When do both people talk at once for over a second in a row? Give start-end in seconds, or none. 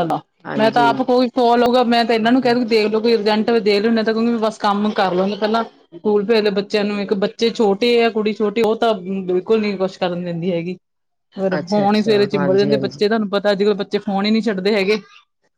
11.6-13.0